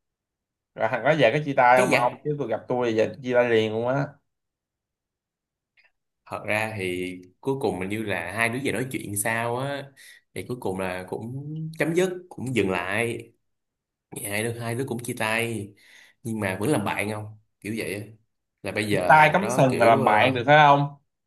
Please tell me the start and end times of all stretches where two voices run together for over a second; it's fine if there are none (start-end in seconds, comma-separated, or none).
18.9-20.4